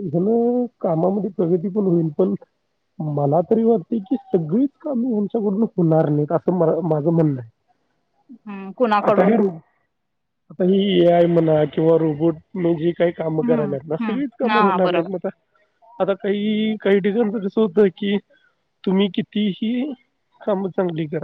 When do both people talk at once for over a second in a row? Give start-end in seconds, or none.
13.4-15.1